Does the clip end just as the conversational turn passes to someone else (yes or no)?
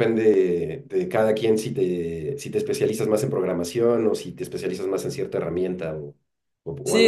yes